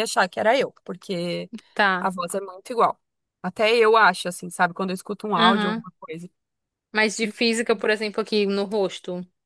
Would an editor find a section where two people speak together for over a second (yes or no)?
no